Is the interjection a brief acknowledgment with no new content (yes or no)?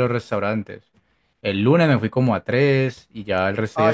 no